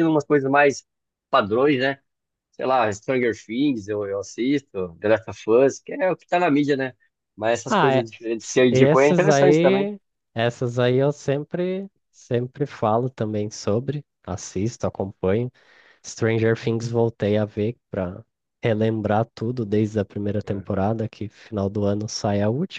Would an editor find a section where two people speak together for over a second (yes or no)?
yes